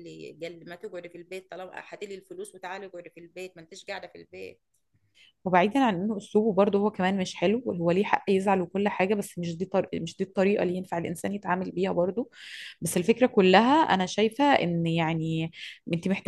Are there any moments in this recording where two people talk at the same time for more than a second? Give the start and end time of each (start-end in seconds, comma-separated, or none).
none